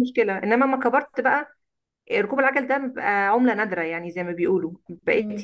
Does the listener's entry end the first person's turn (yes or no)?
no